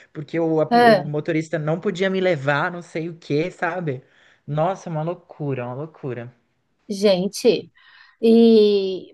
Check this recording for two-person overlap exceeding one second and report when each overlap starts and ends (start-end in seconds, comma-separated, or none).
none